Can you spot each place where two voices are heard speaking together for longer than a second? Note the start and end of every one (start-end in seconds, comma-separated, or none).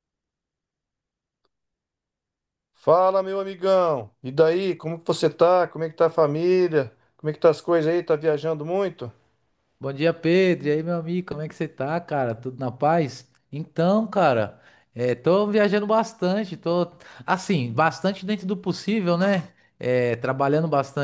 none